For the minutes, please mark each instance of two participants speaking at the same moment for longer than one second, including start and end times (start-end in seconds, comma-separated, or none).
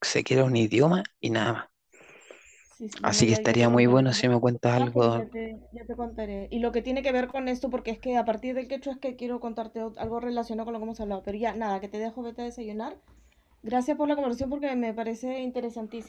3.0-5.3